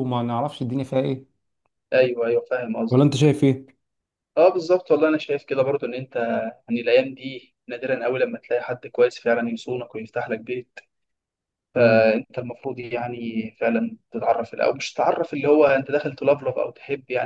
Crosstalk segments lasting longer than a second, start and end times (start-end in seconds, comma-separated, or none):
none